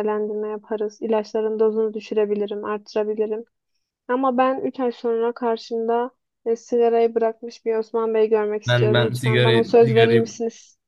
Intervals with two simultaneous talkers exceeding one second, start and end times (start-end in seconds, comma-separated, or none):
8.7-10.2